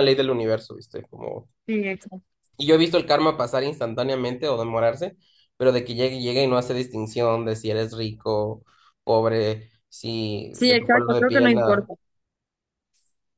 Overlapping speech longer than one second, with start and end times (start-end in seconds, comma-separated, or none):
10.5-11.9